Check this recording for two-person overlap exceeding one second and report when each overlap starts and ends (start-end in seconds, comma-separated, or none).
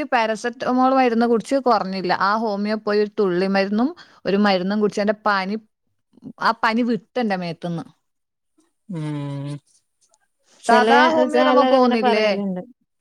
10.7-12.3